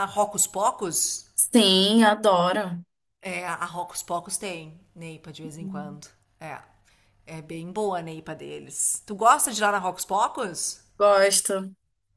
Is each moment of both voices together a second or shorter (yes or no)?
yes